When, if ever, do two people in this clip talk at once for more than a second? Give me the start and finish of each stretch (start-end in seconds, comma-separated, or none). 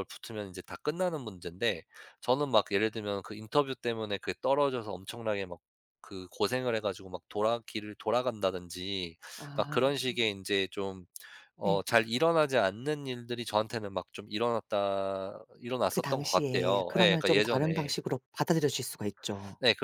15.9-17.9